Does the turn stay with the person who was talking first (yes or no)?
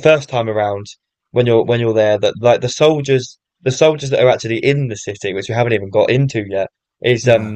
yes